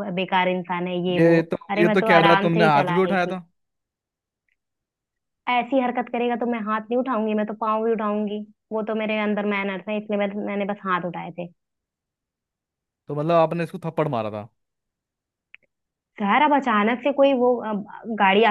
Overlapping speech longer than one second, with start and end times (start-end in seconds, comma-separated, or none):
1.2-3.4